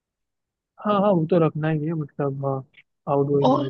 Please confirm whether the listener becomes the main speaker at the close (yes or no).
yes